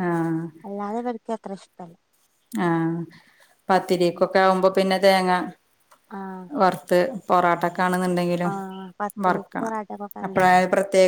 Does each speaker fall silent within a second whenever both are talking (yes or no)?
yes